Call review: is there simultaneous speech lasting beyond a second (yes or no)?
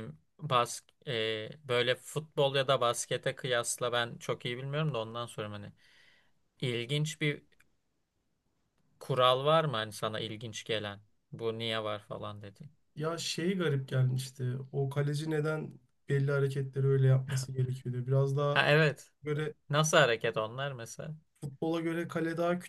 no